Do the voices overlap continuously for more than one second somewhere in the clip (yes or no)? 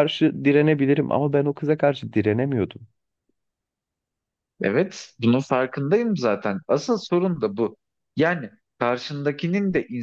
no